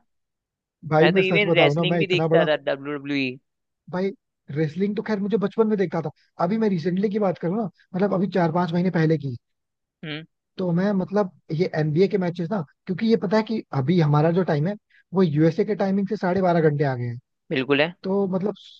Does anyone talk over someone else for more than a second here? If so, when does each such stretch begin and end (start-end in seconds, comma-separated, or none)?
1.0-2.5